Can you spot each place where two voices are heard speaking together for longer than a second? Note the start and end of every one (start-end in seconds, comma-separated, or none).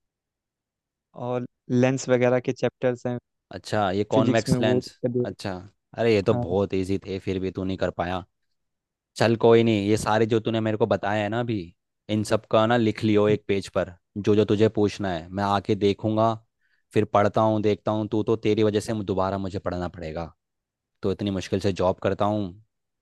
4.1-5.5